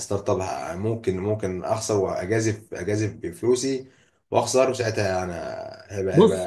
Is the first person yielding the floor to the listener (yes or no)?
yes